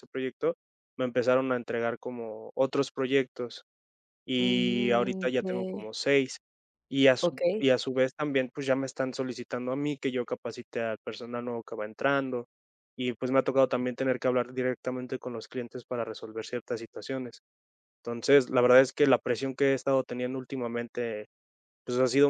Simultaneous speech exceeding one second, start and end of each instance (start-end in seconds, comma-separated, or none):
4.4-5.9